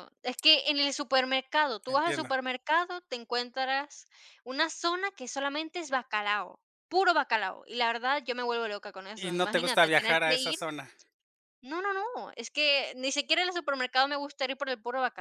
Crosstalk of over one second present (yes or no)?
yes